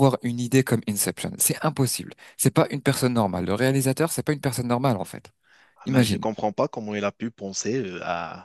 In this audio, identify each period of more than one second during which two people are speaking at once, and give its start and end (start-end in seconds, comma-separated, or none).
none